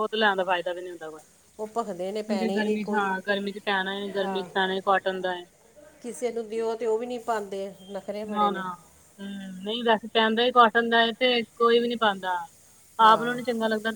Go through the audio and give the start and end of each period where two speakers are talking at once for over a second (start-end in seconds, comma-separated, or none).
none